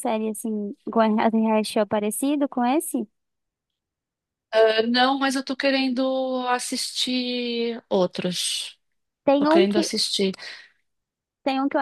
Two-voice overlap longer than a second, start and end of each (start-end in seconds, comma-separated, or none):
none